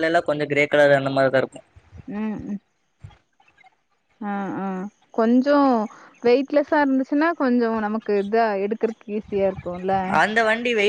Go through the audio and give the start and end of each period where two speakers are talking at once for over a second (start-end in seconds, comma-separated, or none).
none